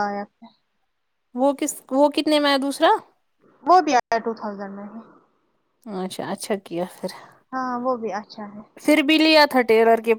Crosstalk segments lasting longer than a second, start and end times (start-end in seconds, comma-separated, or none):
none